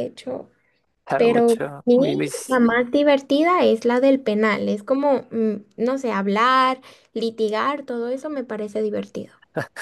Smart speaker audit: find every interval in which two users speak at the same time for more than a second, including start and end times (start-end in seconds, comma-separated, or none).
1.1-2.6